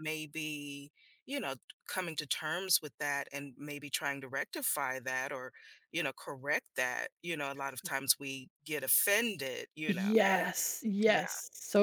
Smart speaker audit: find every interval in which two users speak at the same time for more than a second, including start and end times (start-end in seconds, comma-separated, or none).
none